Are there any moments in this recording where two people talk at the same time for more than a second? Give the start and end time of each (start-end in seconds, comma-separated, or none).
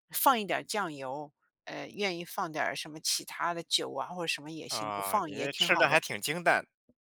4.7-6.0